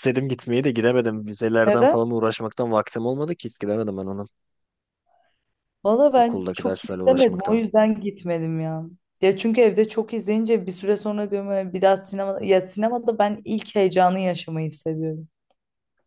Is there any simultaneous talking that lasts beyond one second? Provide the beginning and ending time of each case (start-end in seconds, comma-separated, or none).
6.2-7.6